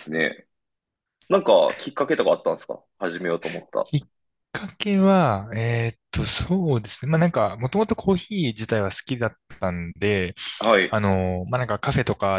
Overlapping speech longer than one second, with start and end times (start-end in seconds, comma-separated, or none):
none